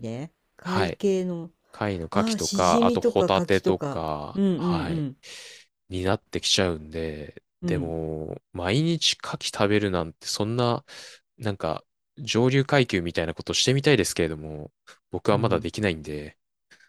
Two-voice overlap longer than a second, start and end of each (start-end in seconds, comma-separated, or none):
2.1-4.5